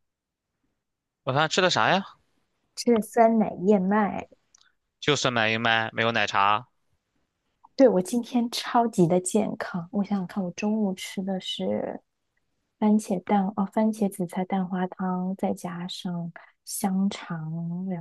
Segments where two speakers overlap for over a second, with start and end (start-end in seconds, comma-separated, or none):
none